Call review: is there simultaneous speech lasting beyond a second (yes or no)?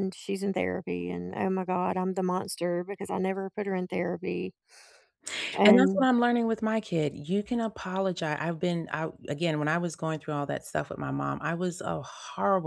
no